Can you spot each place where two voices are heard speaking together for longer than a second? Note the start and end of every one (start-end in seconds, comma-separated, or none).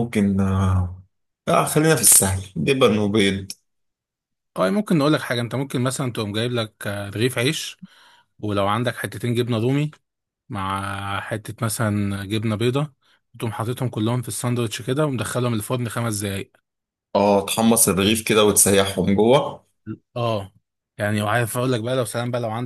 none